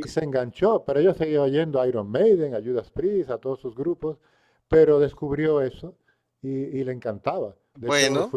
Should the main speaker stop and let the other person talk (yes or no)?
no